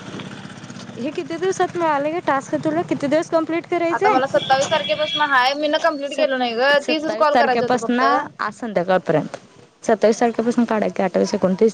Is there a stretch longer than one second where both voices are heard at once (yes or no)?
yes